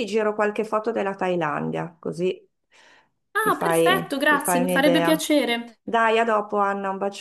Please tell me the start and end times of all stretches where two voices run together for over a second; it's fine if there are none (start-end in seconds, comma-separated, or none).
3.4-5.3